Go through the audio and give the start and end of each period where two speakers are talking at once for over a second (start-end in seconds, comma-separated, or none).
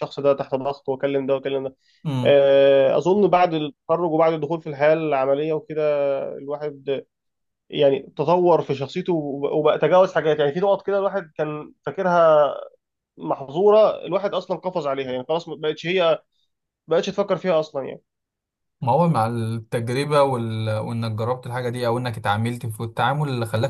none